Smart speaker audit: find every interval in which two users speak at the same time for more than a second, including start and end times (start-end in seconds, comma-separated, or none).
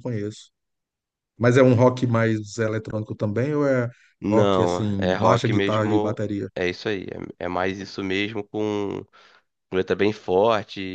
4.2-6.5